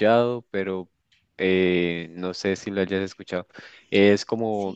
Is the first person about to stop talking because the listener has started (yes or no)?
no